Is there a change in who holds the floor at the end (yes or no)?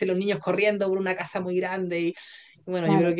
no